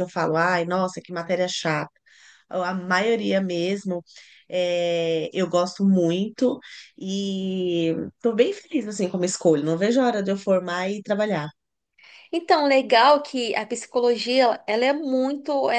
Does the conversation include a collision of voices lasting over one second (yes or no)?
no